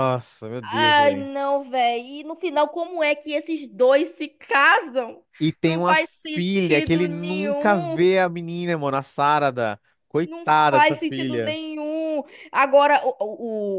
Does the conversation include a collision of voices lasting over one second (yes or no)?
yes